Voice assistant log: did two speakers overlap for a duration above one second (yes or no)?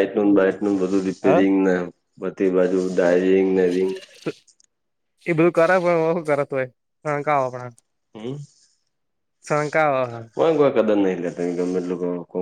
no